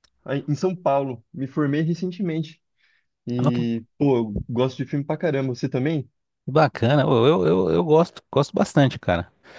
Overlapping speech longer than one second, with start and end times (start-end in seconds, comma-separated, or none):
none